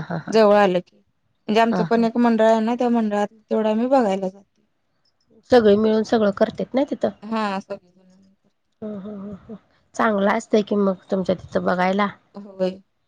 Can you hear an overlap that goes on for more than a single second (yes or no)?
no